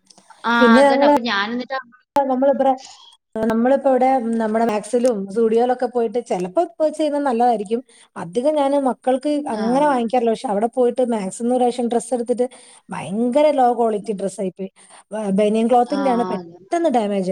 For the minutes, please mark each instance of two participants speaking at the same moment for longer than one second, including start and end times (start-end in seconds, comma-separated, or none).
none